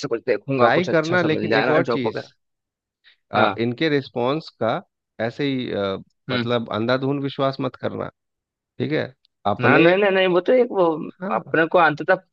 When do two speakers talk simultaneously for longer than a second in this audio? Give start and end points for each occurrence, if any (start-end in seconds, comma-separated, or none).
0.6-2.2